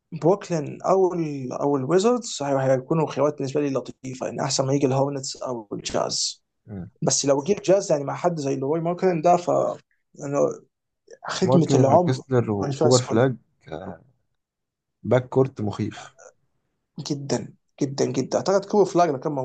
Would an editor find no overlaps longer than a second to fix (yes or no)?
no